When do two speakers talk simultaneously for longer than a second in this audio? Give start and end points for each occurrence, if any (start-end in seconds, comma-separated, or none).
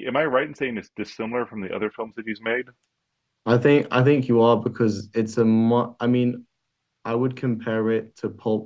none